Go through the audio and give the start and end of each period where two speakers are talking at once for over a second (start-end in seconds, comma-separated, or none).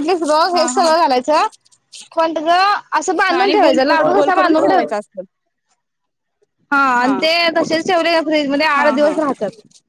3.3-4.9